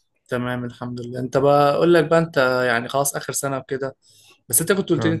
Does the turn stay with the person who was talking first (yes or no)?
yes